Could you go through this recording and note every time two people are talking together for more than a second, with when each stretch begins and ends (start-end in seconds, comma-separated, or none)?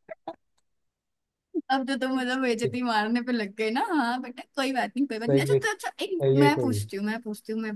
5.3-6.9